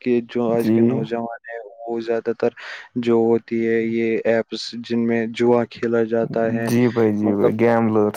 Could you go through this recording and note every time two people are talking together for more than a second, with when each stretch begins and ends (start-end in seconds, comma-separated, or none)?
none